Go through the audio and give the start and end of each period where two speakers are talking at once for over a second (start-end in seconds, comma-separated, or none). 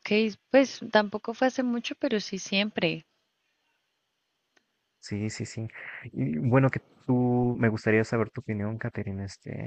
none